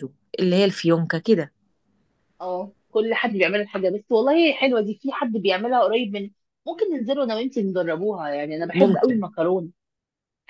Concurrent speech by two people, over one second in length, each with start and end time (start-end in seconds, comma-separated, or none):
none